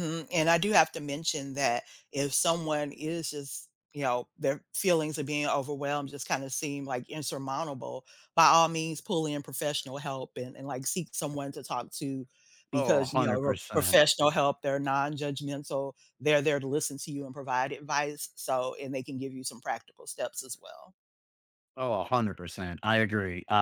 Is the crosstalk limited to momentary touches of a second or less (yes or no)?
no